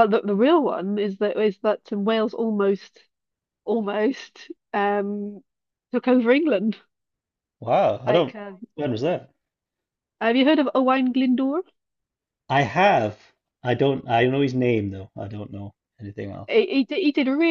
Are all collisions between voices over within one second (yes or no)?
yes